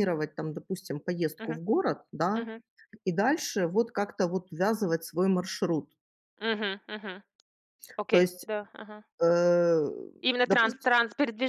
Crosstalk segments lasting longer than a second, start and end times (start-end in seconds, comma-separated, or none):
none